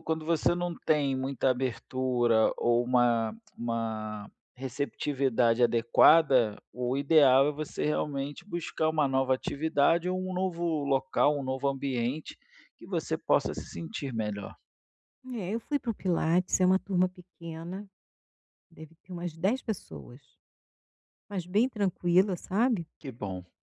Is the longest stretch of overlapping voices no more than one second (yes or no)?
yes